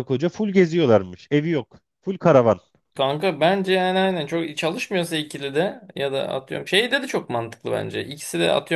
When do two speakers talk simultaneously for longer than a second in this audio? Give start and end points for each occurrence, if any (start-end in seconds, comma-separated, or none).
none